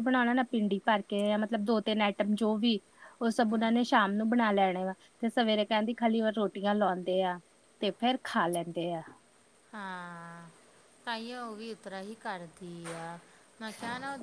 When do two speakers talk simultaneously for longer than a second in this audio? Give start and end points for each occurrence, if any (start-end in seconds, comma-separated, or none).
none